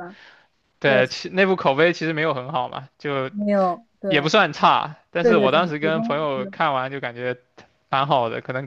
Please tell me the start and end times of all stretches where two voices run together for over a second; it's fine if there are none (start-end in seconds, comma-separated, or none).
5.2-6.5